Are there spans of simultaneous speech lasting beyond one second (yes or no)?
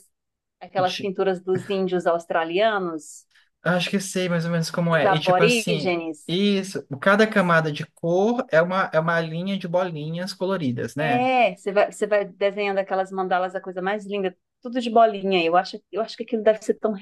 yes